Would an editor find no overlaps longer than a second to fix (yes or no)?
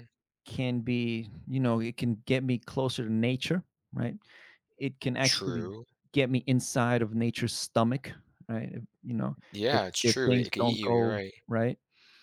no